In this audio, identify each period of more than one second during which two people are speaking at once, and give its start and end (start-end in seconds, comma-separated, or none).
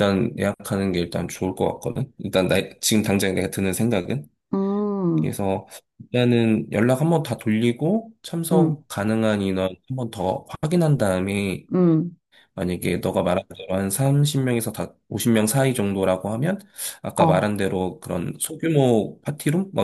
none